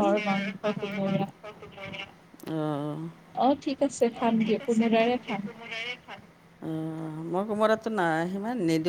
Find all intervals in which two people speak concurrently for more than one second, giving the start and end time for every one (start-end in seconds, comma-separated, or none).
none